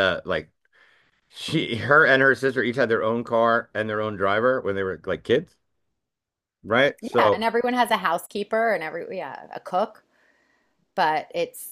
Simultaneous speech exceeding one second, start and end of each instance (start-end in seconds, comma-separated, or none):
none